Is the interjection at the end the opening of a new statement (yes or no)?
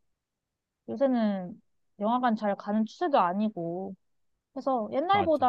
no